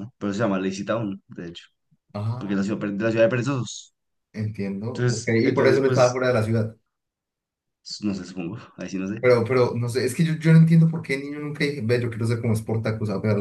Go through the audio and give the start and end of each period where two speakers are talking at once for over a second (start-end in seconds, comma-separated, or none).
4.9-6.2